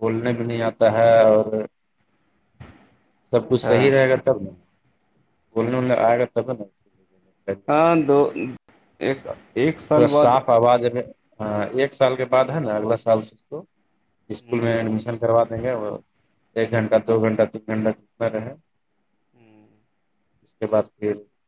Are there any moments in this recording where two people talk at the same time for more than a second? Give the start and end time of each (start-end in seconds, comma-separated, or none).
none